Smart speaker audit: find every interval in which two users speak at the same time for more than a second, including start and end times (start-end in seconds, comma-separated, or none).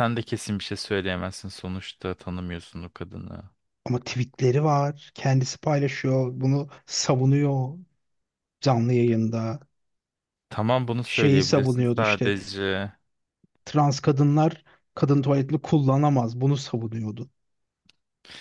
11.0-12.3